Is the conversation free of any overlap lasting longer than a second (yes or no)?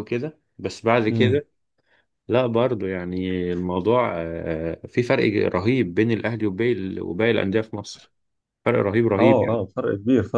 yes